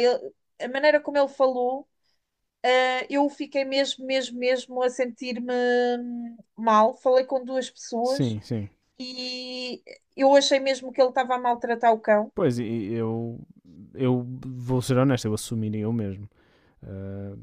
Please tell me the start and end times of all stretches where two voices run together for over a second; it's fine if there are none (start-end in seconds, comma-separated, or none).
none